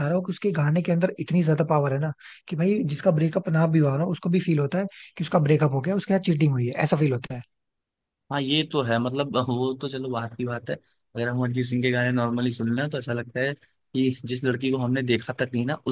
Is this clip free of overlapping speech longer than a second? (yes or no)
yes